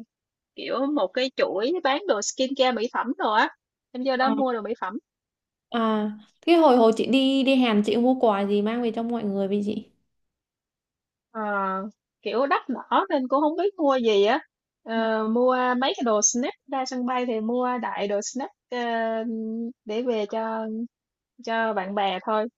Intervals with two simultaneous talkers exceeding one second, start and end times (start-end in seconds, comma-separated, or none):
none